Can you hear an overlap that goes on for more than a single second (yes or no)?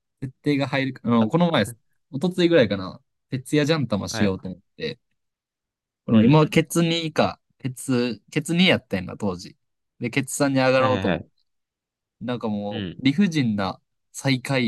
no